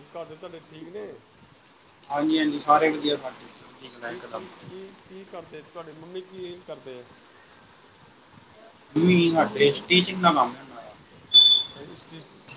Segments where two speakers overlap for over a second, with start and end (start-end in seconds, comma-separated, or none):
none